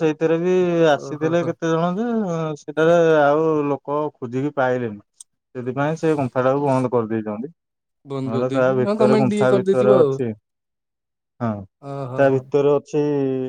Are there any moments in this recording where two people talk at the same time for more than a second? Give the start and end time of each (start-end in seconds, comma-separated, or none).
8.3-10.1